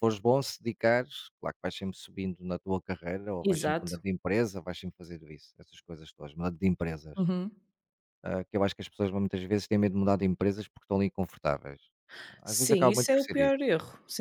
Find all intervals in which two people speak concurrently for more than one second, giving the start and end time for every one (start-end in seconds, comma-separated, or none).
12.4-13.7